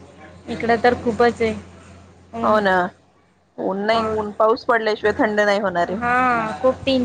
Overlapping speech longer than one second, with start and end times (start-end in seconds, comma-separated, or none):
none